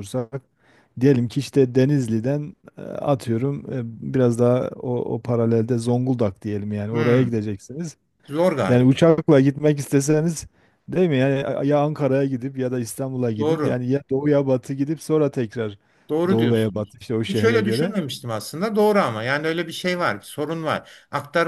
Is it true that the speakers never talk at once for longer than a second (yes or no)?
no